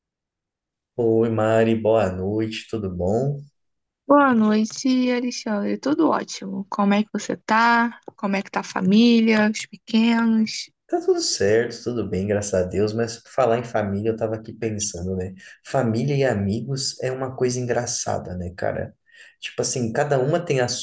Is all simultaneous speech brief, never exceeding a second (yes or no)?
yes